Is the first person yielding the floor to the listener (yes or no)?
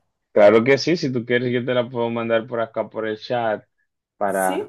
no